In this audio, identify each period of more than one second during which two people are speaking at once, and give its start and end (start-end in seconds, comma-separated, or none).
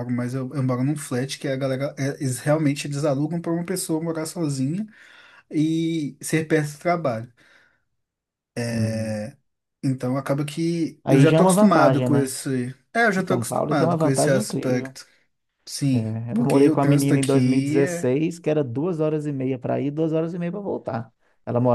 11.0-12.3, 13.2-15.0, 15.9-18.1